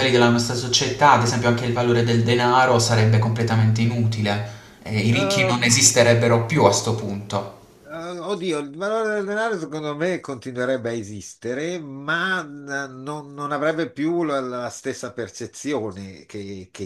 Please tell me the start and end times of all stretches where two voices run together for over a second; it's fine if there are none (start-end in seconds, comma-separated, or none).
none